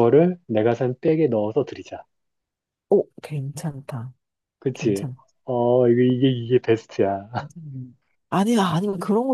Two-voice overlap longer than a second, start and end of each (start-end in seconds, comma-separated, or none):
none